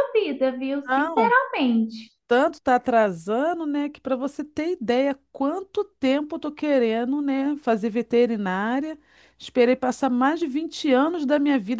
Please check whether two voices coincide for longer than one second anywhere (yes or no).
no